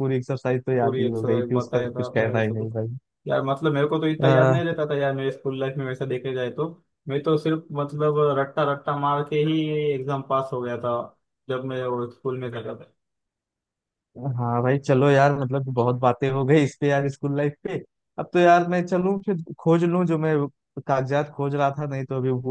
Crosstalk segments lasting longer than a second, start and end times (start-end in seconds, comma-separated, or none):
0.8-2.7